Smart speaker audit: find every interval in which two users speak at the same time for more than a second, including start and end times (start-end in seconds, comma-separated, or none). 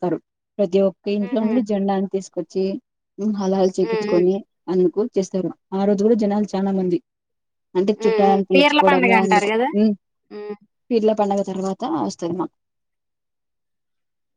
8.0-9.5